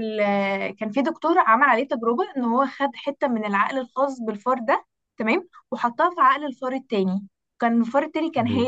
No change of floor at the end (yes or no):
yes